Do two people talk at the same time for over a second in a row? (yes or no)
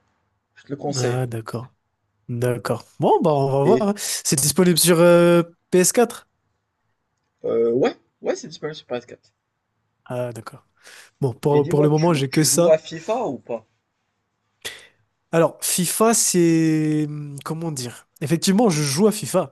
yes